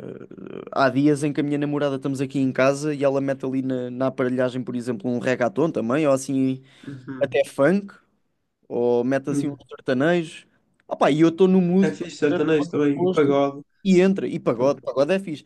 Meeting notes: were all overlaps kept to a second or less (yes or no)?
no